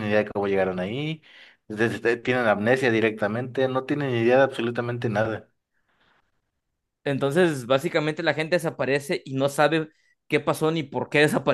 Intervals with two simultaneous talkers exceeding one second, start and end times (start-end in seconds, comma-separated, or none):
none